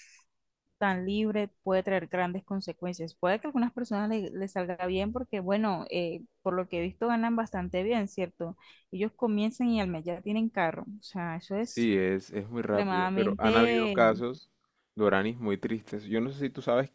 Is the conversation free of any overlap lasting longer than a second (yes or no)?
no